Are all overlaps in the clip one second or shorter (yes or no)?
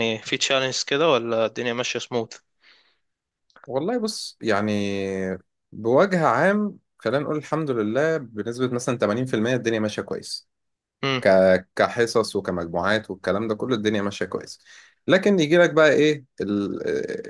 yes